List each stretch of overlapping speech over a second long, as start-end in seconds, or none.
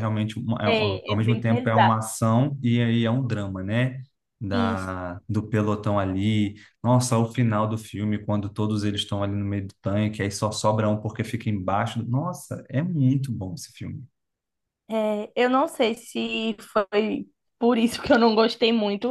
0.7-1.9